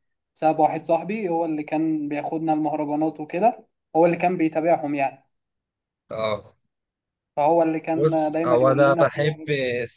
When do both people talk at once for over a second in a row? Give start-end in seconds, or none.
8.0-9.4